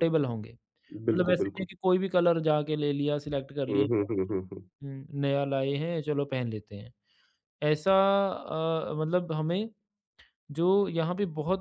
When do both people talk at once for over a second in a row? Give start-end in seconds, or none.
none